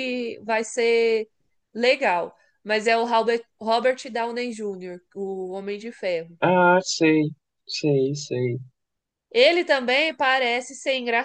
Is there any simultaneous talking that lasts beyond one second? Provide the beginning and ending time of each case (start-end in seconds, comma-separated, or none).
none